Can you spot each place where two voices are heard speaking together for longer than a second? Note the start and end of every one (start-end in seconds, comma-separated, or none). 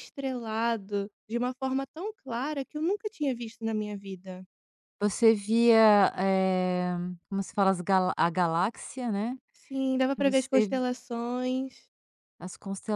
none